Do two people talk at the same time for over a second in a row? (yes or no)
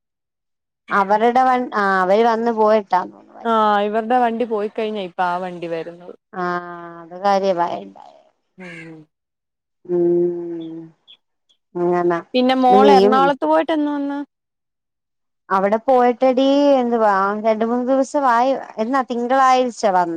no